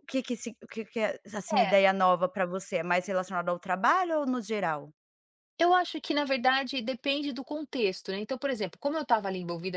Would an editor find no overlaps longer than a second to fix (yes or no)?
yes